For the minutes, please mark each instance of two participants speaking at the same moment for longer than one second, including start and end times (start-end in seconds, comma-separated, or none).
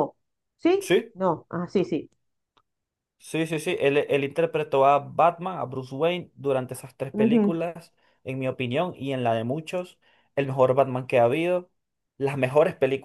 none